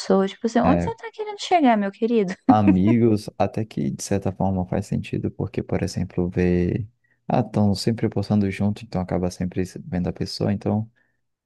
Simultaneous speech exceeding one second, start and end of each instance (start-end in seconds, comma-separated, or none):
none